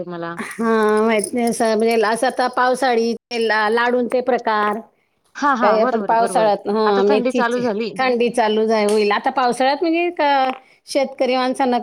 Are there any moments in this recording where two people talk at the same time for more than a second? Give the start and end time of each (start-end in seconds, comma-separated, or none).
5.6-7.9